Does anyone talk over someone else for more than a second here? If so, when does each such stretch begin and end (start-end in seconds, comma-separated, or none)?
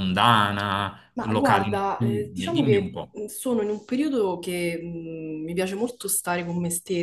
1.1-3.2